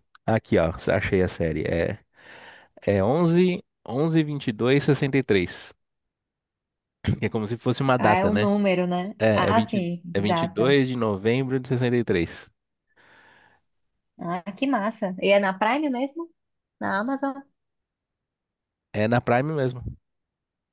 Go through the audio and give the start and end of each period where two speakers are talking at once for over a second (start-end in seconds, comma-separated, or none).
9.2-10.8